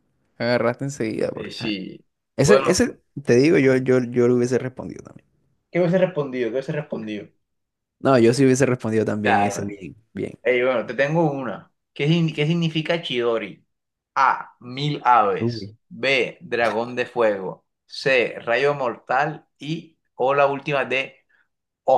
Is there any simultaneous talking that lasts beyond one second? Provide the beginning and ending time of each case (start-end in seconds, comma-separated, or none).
none